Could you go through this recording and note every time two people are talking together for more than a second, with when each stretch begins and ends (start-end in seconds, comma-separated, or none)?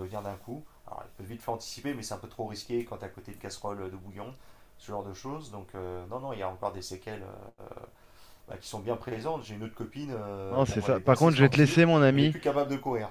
10.5-12.4